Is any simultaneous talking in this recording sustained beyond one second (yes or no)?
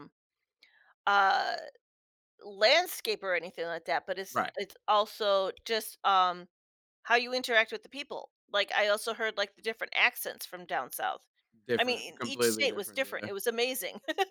yes